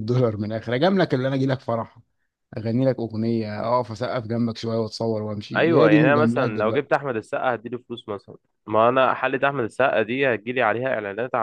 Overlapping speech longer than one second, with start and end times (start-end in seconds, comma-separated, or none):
5.5-6.9